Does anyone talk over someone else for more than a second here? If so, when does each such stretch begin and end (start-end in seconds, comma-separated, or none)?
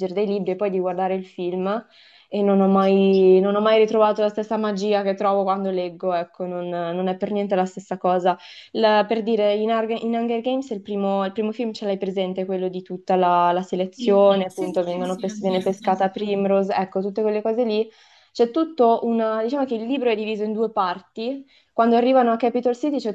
13.9-16.0